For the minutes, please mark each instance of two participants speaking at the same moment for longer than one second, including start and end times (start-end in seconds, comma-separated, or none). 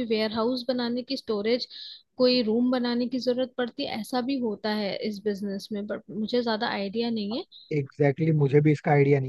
none